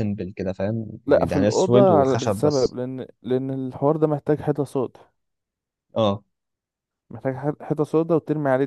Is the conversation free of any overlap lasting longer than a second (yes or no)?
no